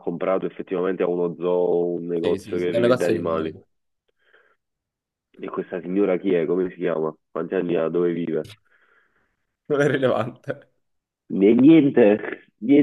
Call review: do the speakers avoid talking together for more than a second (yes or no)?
no